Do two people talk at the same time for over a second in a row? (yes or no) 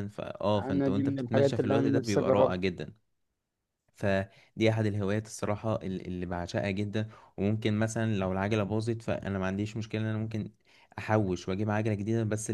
yes